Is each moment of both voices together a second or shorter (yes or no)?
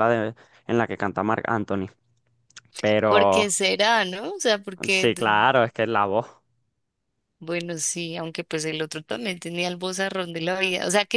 yes